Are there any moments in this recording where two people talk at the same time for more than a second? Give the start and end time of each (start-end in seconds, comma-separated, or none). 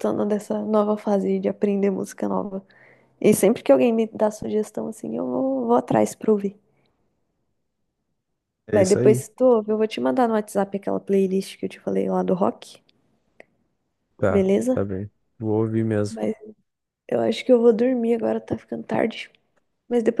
none